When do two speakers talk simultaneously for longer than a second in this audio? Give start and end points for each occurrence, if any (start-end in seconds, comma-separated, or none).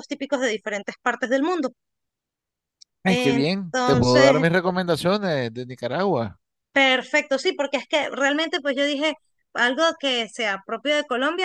3.0-4.4